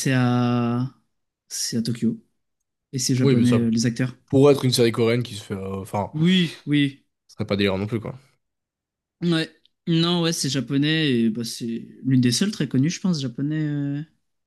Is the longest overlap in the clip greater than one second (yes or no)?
no